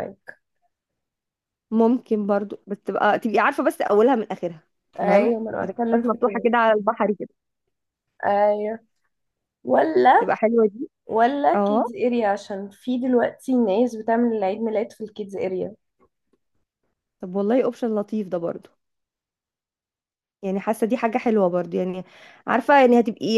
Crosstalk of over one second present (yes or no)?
yes